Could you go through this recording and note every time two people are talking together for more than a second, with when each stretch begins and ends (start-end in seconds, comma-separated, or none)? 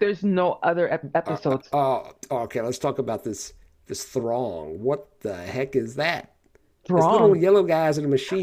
none